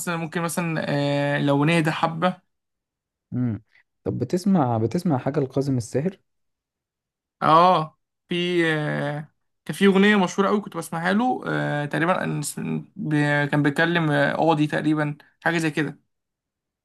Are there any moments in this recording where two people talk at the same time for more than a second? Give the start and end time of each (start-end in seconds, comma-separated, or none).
none